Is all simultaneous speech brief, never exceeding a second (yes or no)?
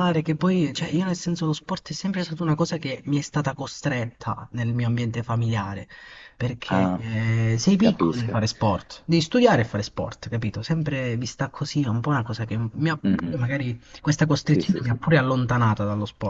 yes